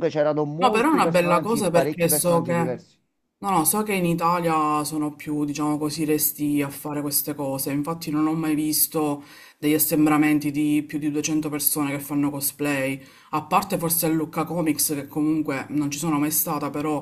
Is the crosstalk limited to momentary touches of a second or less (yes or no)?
no